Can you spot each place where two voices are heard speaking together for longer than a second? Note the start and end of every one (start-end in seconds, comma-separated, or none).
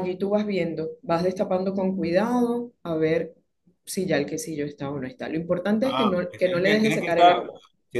5.8-7.5